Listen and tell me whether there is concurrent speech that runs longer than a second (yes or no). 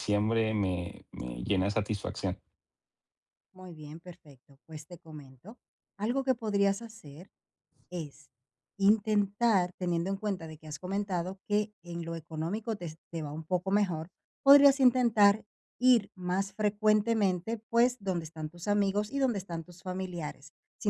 no